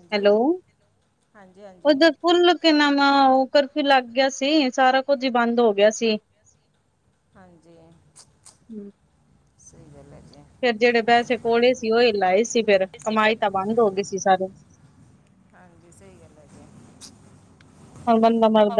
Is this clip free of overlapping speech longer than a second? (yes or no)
yes